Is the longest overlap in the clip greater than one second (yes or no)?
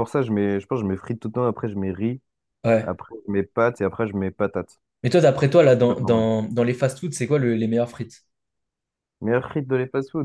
no